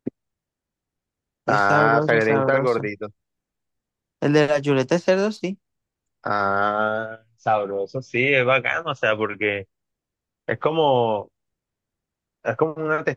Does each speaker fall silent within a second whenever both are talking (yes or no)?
no